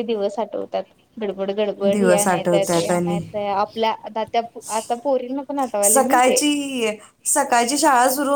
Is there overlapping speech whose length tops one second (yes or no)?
yes